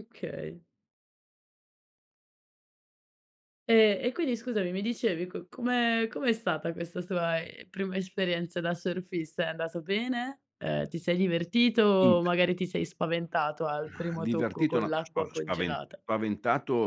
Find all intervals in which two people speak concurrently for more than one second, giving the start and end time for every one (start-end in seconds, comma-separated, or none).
13.8-16.0